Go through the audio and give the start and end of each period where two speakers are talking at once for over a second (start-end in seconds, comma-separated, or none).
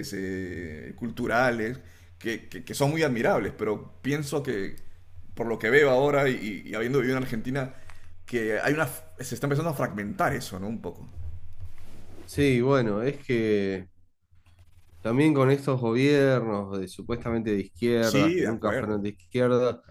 18.0-19.4